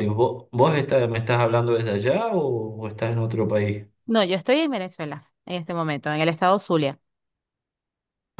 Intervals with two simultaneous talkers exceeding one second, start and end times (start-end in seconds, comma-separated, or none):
none